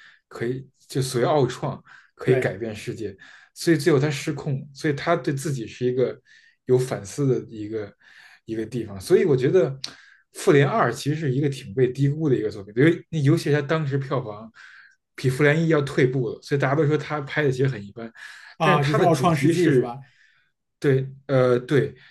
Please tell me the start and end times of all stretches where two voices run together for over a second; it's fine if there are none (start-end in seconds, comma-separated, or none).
18.6-19.9